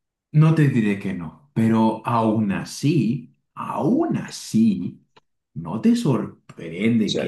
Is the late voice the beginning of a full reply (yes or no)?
no